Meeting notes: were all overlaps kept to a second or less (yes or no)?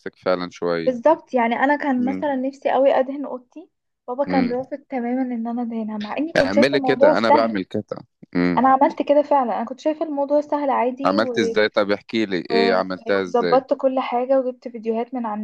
no